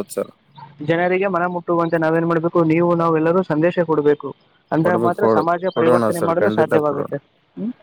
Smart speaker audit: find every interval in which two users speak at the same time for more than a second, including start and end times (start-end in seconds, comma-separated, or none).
4.8-7.1